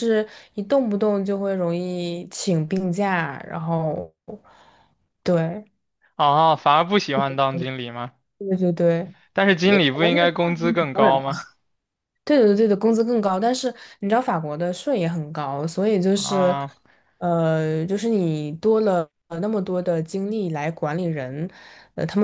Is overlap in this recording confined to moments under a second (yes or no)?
no